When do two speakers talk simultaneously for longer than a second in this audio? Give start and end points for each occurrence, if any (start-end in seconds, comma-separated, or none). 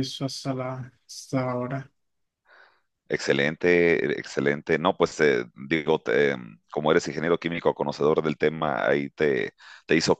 none